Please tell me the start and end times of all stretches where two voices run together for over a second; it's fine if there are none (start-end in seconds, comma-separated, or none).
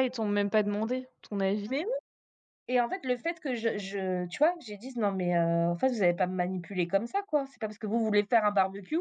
none